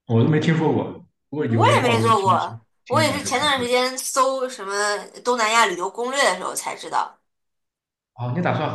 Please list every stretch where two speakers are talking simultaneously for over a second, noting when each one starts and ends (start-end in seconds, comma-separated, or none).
1.6-3.7